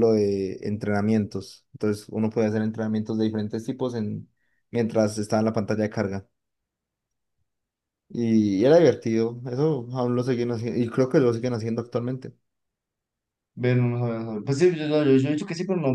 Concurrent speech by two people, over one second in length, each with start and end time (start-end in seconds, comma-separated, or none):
none